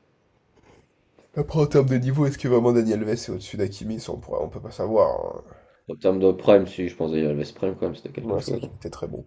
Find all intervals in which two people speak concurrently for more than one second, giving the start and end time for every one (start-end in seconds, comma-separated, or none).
none